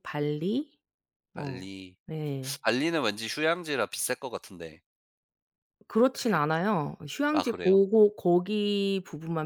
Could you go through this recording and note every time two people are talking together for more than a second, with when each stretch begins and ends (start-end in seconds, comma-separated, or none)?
none